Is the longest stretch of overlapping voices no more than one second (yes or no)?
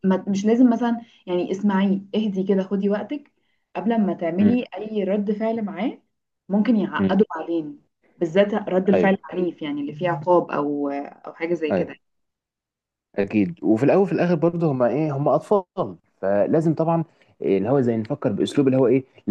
yes